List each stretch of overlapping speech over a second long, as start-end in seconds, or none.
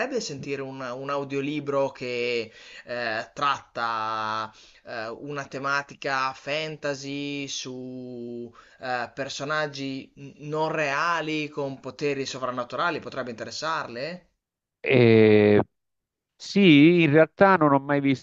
none